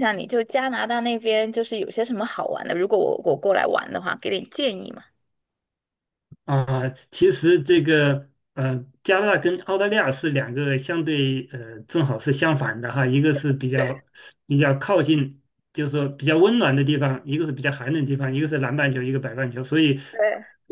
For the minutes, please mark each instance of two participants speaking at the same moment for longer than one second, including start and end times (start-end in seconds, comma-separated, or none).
none